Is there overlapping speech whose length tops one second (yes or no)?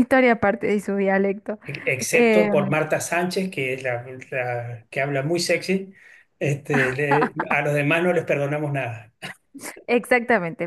no